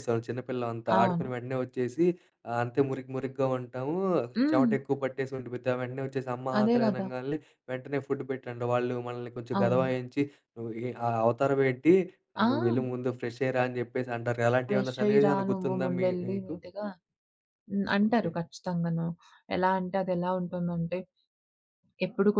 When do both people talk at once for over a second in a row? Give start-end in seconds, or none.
14.7-16.6